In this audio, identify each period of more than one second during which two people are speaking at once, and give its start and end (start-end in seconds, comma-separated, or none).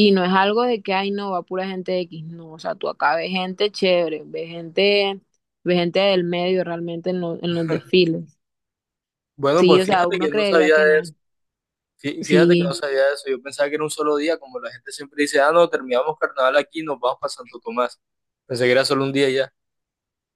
9.6-10.9